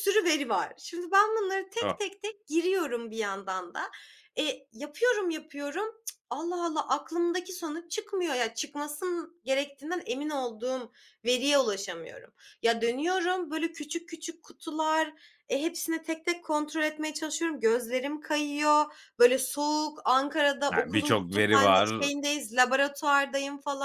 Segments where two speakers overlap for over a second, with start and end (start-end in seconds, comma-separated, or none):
20.7-22.1